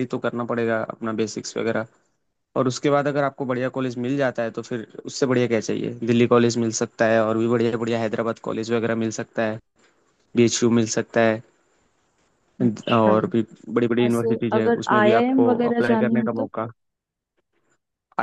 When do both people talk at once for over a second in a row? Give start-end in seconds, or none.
14.1-16.5